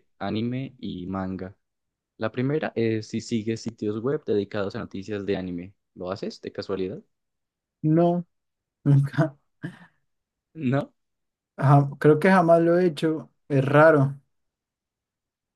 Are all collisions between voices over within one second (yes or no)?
yes